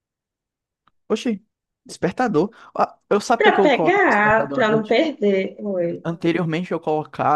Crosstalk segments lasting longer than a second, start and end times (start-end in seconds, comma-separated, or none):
3.4-5.0